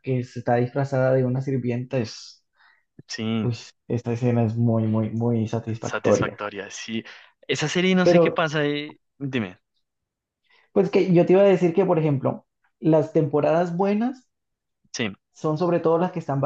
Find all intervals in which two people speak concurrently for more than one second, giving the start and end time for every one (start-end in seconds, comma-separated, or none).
none